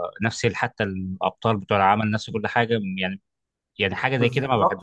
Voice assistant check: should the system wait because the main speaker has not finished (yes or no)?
no